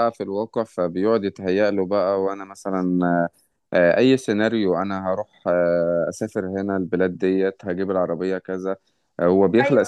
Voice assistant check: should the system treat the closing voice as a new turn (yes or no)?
no